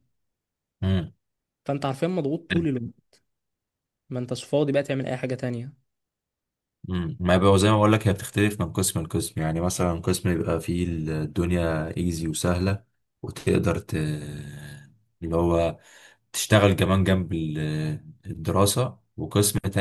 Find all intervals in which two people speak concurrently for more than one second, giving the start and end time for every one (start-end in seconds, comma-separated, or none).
none